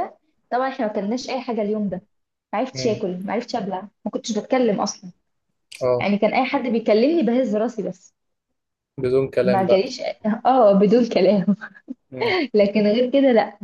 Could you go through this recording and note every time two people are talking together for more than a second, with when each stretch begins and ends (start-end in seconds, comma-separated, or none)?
none